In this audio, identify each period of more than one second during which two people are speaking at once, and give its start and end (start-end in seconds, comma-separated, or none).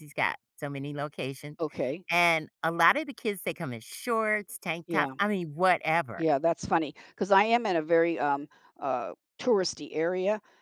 none